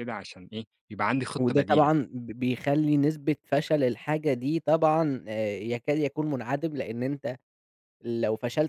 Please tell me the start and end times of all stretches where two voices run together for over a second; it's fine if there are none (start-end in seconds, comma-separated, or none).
none